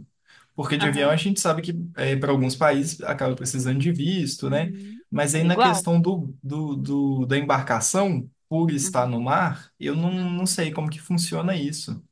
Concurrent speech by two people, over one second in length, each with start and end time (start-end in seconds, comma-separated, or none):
none